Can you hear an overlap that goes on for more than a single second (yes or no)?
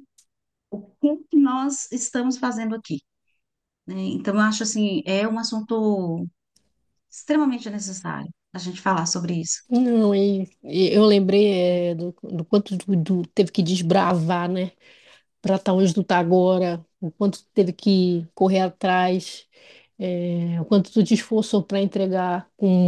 no